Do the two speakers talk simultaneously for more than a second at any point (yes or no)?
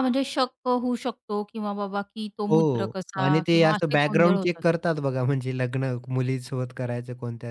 yes